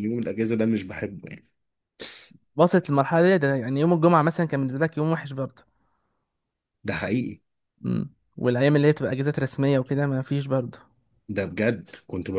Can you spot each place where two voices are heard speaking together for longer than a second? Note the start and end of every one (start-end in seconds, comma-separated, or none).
none